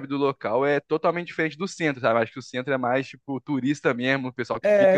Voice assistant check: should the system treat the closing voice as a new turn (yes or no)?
yes